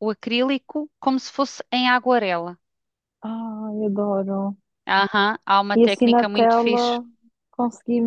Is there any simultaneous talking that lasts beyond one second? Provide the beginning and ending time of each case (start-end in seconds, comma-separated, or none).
5.8-7.0